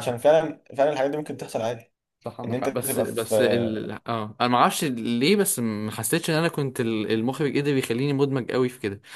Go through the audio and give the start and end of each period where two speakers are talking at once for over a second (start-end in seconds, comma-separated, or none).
2.5-3.9